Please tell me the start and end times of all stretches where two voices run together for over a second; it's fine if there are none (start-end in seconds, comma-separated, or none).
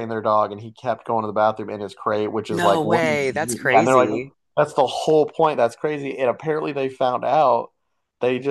2.5-4.1